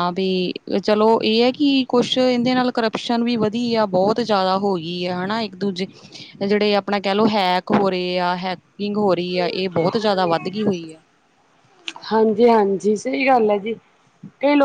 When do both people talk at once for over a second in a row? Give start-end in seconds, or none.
none